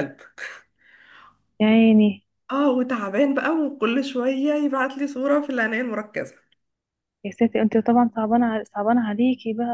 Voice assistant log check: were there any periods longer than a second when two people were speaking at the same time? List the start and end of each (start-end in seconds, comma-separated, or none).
none